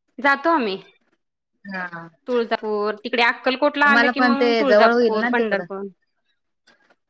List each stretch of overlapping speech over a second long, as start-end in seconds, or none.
3.8-5.6